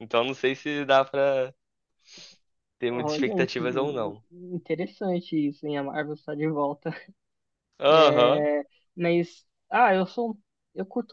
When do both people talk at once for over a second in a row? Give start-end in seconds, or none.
2.9-4.2